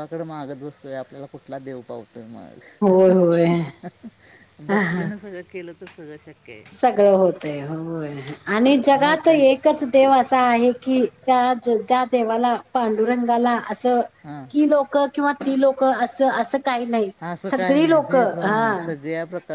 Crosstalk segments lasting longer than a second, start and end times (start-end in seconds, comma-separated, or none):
17.5-18.9